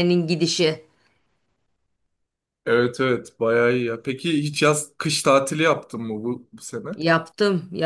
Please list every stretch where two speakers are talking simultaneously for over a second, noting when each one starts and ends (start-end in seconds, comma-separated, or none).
none